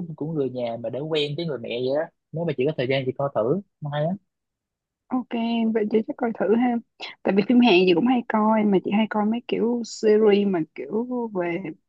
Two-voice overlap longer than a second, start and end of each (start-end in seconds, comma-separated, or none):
none